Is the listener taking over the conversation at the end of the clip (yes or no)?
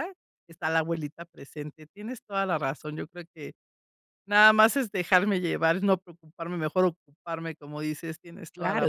yes